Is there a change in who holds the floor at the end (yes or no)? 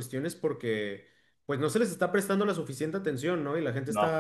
no